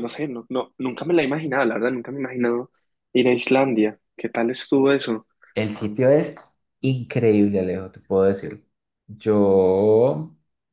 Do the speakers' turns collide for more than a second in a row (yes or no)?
no